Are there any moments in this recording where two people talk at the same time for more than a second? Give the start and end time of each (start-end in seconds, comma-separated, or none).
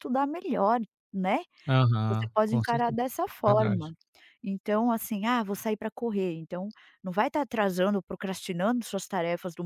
2.1-3.9